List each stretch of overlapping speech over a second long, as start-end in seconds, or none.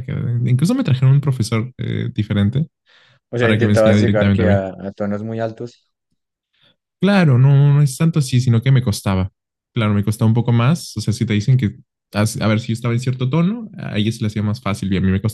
3.4-4.6